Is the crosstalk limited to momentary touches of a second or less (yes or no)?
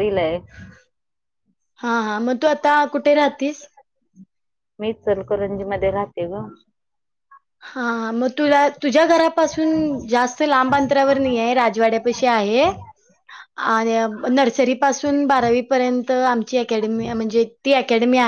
yes